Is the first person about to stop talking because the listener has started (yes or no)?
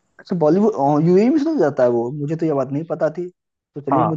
no